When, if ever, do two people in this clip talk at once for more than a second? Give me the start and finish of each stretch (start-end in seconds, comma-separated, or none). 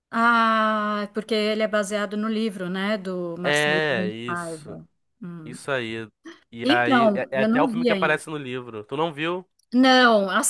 3.4-4.8, 6.6-8.2